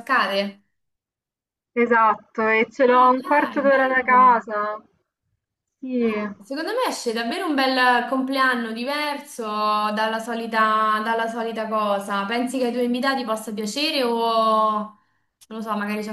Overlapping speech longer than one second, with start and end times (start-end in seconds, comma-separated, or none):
2.9-4.3